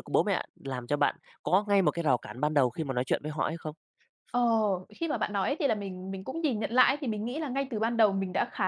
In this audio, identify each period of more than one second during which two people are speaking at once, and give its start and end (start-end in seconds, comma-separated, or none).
none